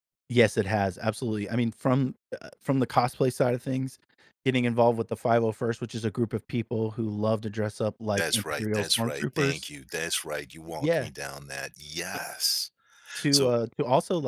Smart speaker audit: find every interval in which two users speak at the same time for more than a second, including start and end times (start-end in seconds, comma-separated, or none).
8.2-9.6